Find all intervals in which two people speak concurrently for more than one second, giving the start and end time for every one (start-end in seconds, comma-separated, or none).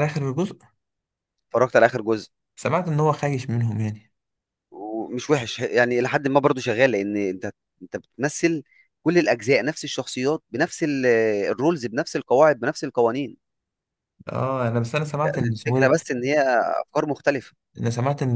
none